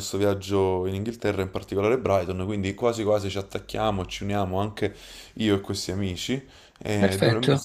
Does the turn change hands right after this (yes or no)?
no